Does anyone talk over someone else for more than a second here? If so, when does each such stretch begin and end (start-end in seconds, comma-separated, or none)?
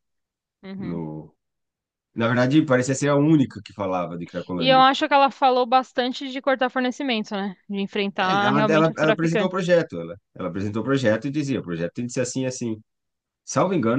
8.2-9.6